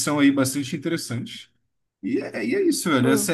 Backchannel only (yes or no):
yes